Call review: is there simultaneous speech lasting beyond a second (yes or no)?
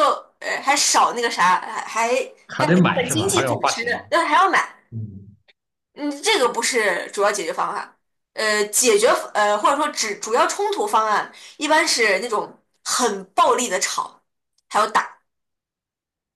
yes